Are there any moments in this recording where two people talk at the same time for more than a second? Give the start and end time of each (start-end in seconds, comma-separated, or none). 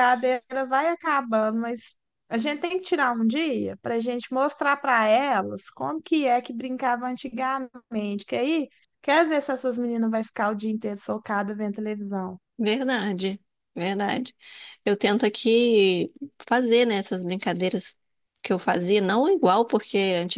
none